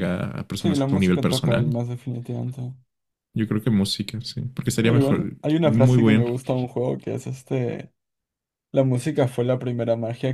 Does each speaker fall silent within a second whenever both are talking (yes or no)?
no